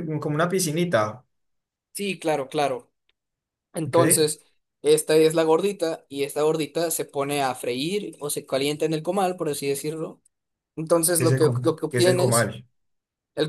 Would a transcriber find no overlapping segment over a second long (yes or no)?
no